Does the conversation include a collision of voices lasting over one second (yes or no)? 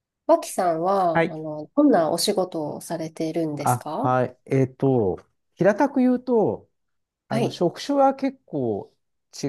no